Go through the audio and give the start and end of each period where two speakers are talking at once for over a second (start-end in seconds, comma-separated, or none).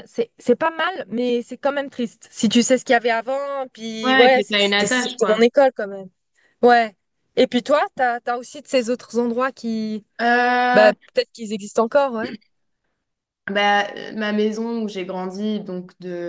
4.0-5.4